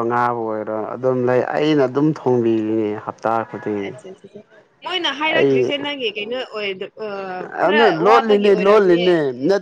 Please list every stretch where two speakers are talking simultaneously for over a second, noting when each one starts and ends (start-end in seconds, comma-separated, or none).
7.6-9.1